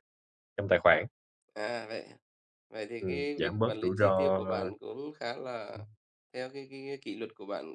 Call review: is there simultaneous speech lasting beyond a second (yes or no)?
yes